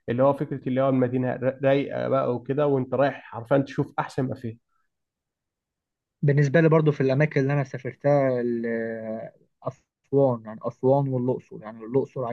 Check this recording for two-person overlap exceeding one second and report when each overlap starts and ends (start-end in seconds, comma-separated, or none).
none